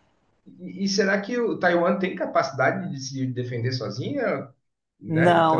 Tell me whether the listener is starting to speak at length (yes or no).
yes